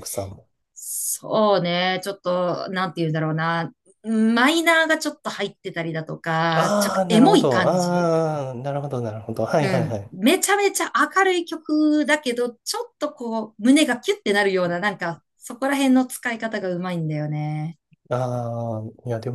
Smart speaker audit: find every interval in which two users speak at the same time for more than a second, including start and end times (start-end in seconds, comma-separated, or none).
6.5-8.1